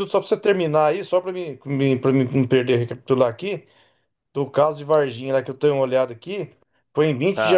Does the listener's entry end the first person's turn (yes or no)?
no